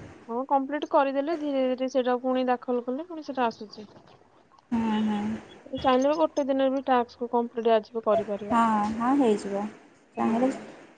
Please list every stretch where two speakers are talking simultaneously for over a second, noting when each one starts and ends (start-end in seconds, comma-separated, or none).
none